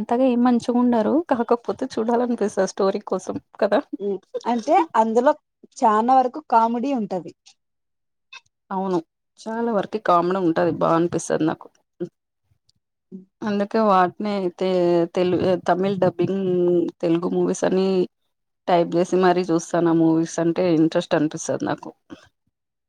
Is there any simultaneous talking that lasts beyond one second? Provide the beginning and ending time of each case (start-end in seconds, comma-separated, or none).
none